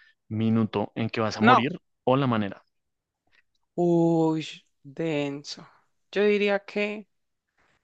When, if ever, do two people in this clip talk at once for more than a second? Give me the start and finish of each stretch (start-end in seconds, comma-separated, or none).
none